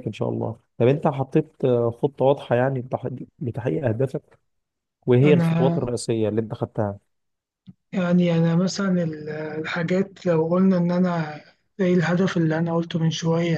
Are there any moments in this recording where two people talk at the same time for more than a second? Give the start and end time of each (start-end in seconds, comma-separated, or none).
none